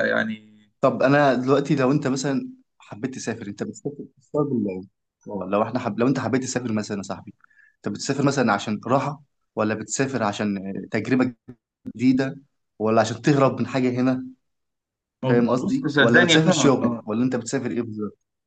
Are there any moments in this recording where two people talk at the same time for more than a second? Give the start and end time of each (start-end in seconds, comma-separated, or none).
15.6-16.8